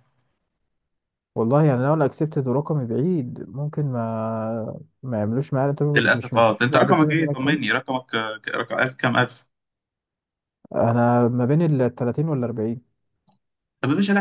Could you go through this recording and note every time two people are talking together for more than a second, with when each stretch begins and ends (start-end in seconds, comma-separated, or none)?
5.9-7.6